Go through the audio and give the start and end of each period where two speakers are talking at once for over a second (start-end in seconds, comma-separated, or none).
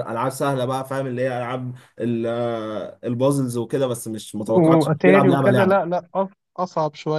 4.5-6.0